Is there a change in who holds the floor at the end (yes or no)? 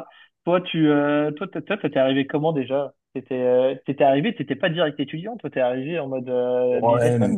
yes